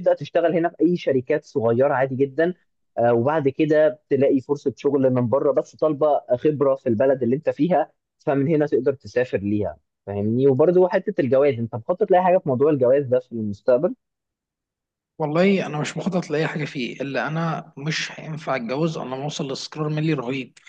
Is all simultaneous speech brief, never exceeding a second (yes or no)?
yes